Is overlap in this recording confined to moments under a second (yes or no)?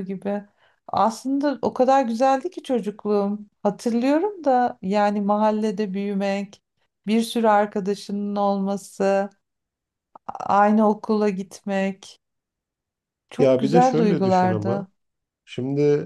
no